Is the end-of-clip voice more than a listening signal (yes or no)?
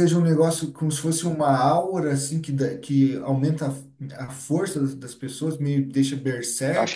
yes